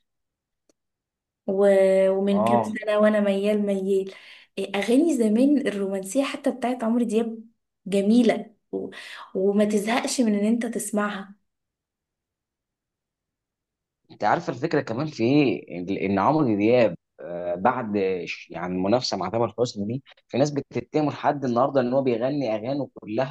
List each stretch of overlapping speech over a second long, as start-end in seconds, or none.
none